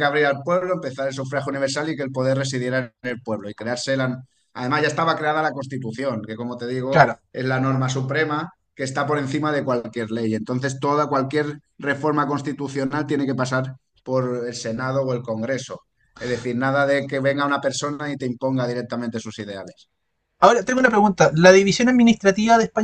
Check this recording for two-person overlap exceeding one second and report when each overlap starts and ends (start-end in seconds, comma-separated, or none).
none